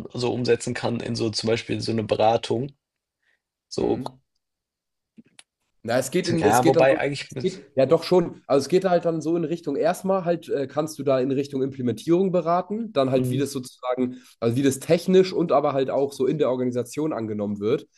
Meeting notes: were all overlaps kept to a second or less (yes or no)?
no